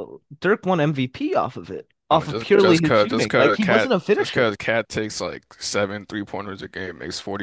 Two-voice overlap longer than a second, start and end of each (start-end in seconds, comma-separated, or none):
2.1-4.5